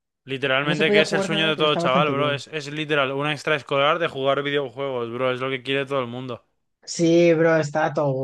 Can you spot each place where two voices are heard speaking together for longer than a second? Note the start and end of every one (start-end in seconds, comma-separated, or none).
0.6-2.4